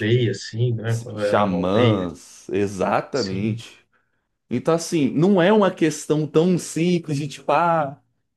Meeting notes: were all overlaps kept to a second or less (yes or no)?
no